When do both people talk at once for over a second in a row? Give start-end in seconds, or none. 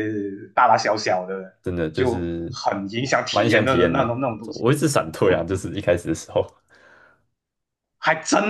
3.3-4.7